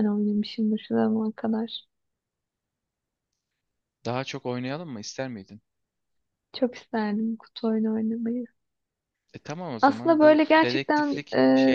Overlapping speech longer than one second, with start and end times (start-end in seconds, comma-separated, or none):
9.8-11.2